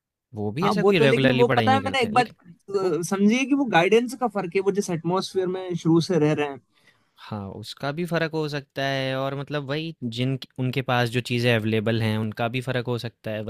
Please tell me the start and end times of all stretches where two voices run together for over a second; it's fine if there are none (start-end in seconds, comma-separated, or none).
0.6-2.2